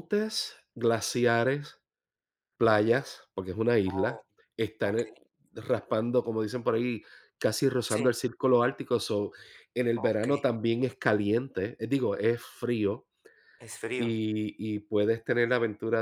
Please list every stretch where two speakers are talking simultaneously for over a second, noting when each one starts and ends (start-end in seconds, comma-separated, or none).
none